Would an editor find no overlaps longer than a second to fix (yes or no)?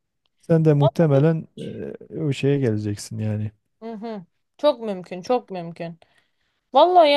yes